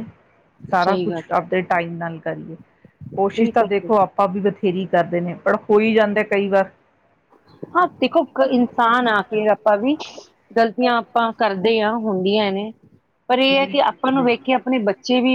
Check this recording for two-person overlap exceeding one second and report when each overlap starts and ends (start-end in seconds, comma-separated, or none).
none